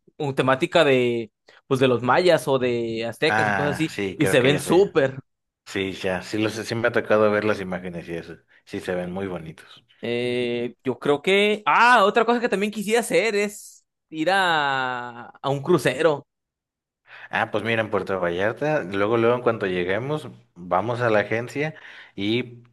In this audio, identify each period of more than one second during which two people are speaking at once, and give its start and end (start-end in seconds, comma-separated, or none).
3.3-4.8